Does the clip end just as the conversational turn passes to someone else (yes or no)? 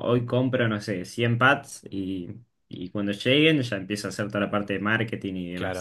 yes